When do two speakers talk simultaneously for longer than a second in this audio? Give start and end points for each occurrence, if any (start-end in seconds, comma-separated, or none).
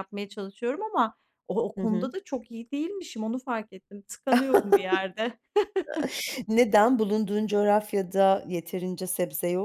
none